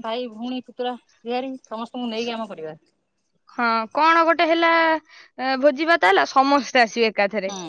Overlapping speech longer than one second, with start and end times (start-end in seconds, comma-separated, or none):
none